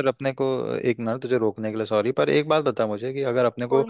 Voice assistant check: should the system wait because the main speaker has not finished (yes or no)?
yes